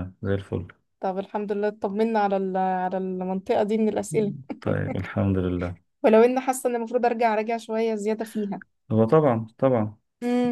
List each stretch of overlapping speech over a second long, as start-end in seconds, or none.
none